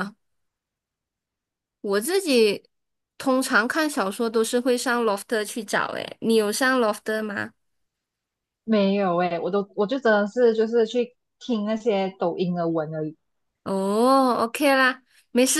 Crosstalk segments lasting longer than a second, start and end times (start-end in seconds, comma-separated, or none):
none